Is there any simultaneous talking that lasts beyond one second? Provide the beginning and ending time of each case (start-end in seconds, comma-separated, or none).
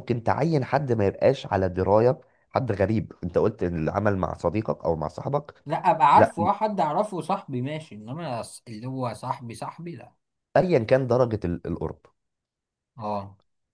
none